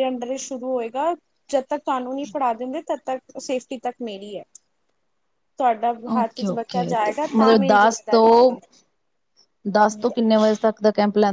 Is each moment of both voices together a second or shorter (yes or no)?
no